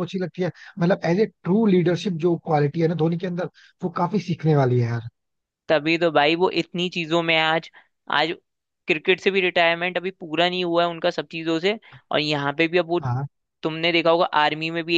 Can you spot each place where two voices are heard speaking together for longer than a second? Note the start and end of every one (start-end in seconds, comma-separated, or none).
none